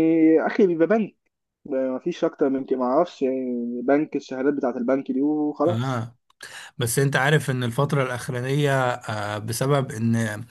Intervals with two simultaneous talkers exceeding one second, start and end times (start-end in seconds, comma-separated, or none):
none